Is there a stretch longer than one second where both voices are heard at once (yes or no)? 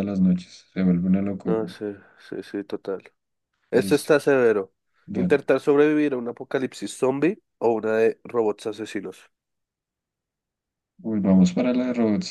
no